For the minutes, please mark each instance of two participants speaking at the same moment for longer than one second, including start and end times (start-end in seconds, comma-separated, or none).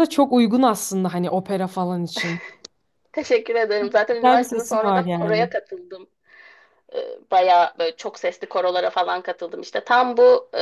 4.1-5.5